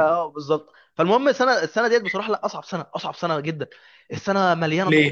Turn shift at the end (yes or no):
no